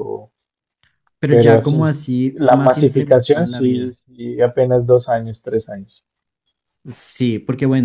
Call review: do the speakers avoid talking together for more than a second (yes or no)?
no